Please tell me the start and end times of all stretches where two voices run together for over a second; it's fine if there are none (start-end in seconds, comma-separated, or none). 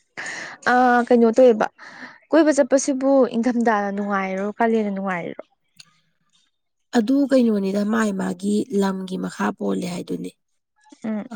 none